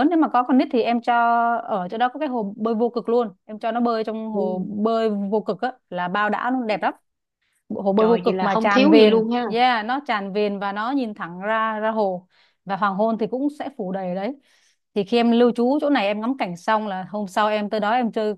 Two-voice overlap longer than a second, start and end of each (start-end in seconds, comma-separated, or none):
8.0-9.4